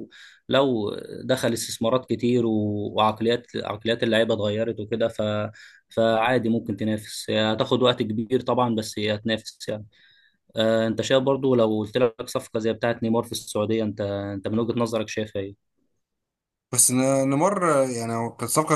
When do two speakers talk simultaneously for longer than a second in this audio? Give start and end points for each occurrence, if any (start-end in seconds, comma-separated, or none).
none